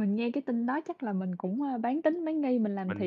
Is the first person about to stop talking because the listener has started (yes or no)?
yes